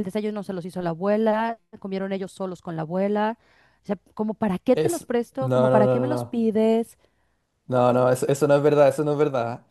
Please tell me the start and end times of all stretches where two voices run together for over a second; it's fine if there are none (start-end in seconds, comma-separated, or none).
4.7-6.4